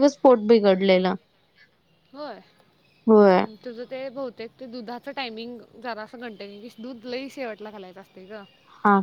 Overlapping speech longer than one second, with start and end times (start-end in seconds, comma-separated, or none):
none